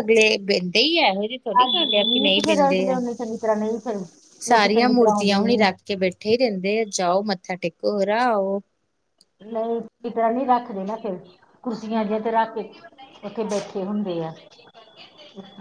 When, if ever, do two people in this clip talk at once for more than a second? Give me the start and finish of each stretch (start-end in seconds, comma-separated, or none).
1.6-3.0, 4.5-5.7